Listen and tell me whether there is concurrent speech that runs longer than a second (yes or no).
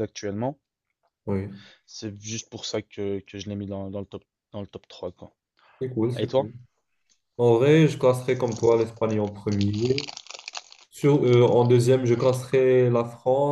no